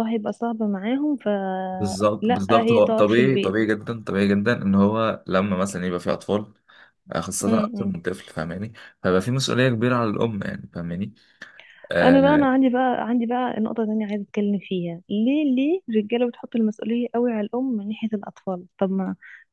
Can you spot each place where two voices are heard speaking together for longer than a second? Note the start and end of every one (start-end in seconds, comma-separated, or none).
1.7-3.6